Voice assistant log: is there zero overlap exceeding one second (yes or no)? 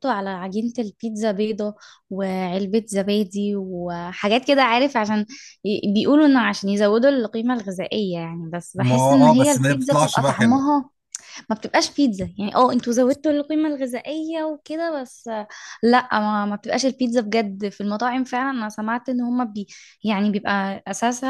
no